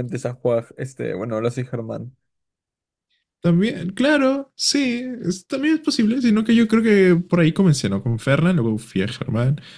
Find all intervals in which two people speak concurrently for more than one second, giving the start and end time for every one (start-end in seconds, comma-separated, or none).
none